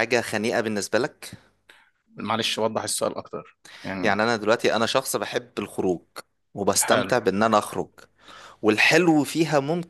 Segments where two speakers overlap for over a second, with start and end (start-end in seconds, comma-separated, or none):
none